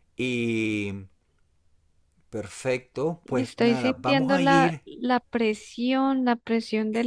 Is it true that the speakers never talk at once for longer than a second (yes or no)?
no